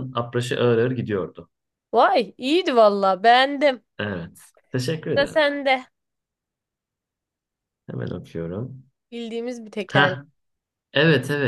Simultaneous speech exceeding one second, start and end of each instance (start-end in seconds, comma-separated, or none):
none